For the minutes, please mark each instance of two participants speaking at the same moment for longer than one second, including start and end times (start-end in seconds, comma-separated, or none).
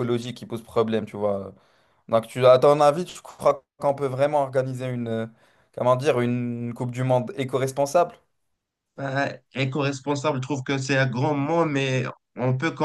none